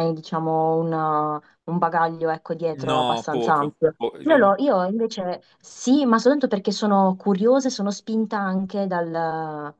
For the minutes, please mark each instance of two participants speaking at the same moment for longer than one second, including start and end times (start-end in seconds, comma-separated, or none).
2.7-4.5